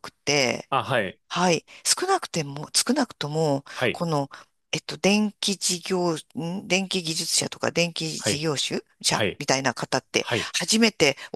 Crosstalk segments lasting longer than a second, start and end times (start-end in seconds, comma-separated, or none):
none